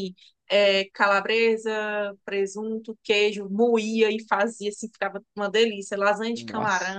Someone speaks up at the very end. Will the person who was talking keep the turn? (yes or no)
yes